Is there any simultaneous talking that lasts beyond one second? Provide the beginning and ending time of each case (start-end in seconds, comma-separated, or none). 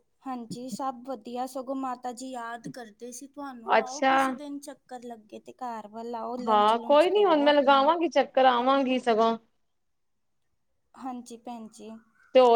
none